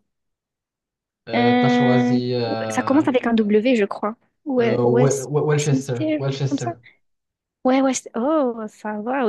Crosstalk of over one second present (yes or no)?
yes